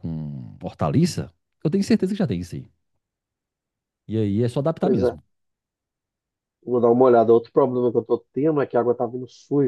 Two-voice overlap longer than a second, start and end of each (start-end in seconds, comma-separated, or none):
none